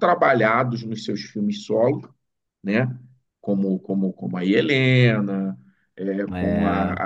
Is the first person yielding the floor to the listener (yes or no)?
no